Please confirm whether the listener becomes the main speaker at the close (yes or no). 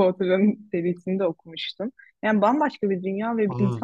no